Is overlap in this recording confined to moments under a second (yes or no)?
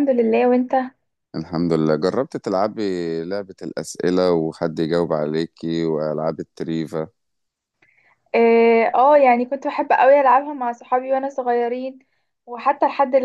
yes